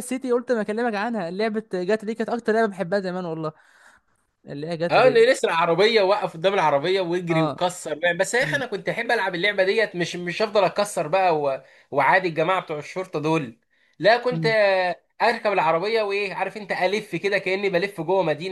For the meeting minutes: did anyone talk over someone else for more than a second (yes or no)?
no